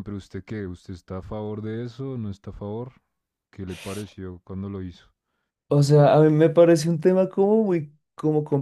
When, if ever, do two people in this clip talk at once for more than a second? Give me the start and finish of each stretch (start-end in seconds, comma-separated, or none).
none